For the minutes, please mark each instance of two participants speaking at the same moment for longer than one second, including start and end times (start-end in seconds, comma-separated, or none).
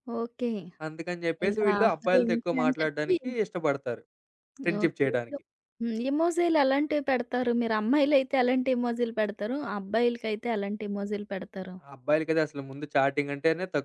1.5-3.1